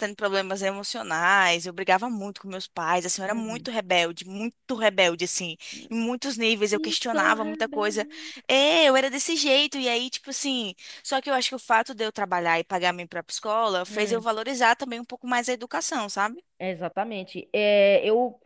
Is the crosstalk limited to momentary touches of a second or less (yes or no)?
no